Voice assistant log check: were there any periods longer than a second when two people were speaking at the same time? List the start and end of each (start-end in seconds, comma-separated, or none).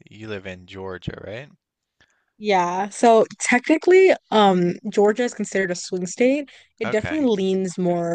none